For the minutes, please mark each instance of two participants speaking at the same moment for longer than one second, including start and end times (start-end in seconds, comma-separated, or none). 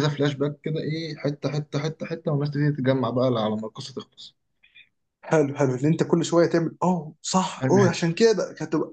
none